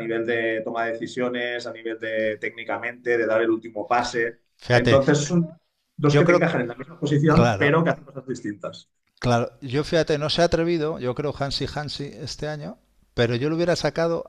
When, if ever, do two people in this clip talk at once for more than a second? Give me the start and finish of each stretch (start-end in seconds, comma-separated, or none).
none